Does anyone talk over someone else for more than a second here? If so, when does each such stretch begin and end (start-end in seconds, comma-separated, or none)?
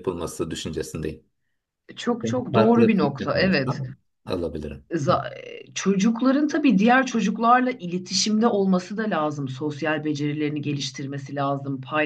2.2-3.8